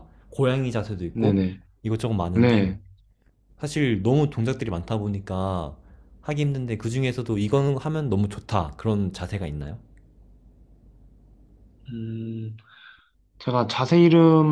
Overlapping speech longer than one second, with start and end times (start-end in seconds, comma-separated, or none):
none